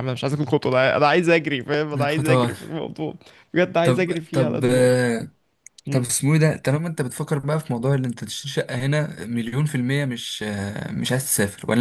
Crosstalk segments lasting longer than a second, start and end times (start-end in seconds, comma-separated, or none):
3.8-5.1